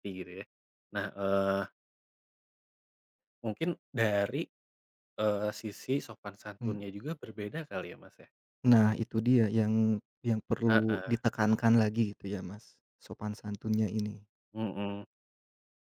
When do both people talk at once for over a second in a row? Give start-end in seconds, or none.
none